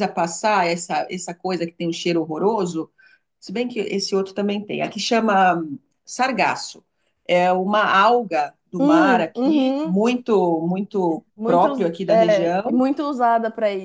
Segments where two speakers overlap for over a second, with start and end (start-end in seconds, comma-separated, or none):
8.8-10.0, 11.4-12.8